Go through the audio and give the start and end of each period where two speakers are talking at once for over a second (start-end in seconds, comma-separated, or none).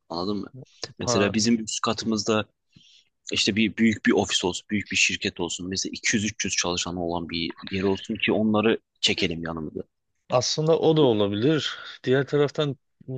none